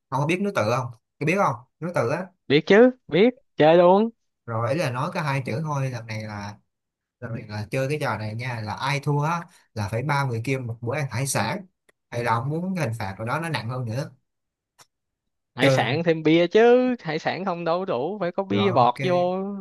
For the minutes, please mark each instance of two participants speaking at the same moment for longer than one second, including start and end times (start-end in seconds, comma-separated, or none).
none